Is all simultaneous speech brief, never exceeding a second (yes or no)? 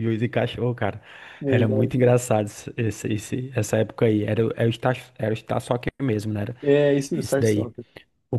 yes